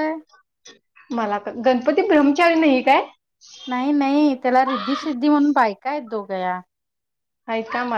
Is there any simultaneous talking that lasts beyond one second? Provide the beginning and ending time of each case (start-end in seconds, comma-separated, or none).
none